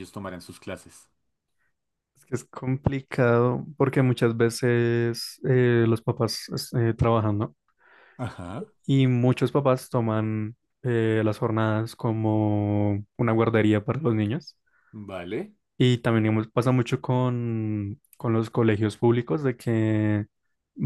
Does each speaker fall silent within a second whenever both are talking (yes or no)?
yes